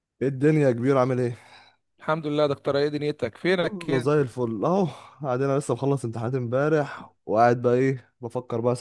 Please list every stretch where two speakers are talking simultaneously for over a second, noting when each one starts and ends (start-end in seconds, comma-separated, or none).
none